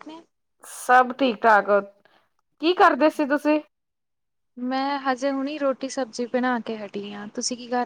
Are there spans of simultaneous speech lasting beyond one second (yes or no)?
no